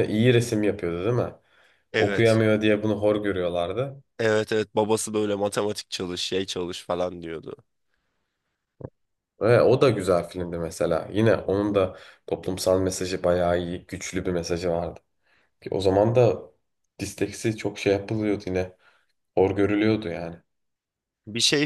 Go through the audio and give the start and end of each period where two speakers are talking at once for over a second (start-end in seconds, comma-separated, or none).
none